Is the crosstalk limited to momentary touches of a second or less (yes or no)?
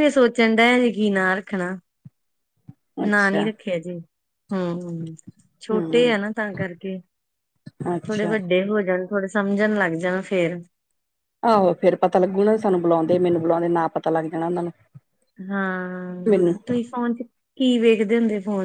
yes